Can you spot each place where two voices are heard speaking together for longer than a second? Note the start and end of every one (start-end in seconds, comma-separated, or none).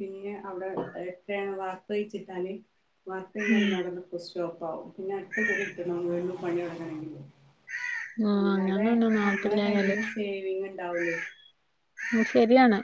8.4-9.9